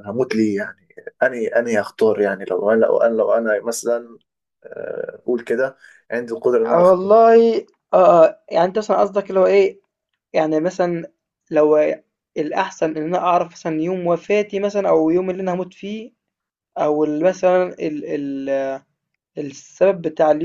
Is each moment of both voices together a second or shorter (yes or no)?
yes